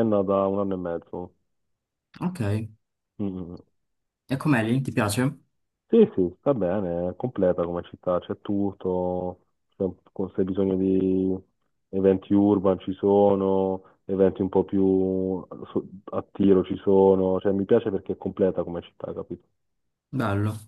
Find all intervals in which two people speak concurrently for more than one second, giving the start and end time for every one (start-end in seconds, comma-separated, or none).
none